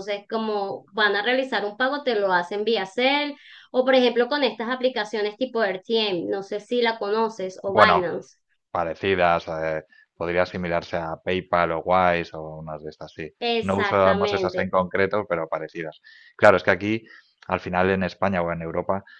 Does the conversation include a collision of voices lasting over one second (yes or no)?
yes